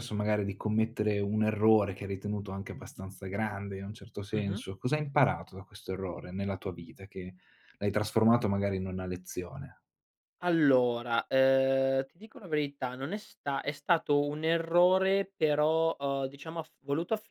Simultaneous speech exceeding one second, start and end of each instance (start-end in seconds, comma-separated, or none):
none